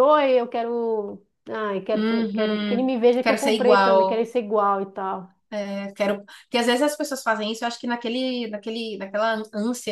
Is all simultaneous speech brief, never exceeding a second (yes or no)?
no